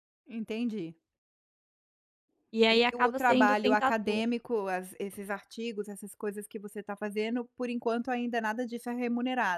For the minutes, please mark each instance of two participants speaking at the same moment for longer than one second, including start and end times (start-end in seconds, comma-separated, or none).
2.7-4.2